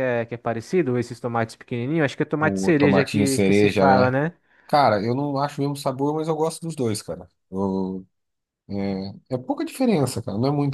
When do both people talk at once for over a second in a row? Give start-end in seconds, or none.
2.4-4.1